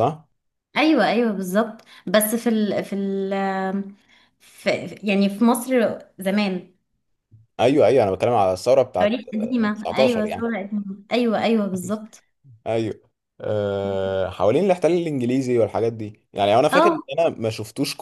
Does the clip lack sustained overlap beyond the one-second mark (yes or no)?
no